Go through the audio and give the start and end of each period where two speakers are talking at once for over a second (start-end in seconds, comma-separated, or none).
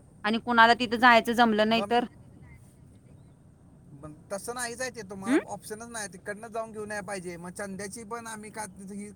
none